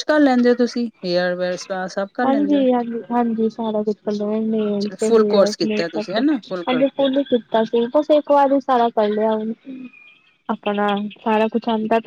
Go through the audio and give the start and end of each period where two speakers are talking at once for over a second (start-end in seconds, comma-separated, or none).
none